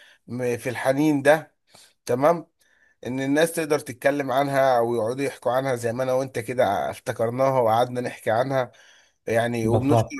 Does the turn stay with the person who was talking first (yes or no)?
yes